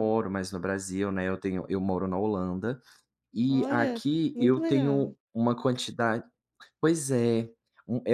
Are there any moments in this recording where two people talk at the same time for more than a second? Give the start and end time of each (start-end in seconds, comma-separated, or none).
3.5-5.1